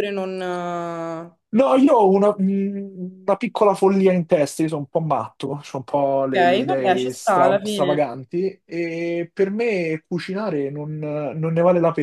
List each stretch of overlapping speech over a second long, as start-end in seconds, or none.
6.4-8.0